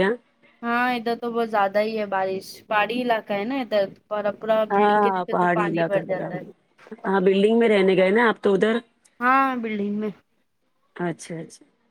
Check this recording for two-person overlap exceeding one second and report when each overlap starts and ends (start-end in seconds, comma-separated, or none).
4.7-6.5